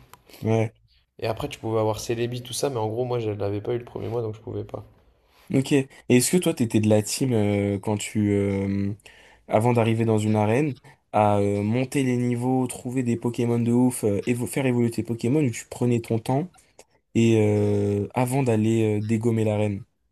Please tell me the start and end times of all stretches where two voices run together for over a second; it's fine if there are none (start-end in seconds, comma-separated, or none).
none